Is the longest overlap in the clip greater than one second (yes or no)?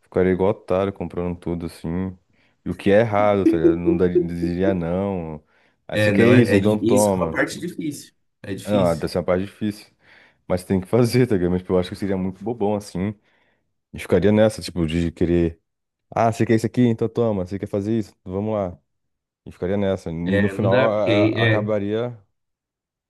yes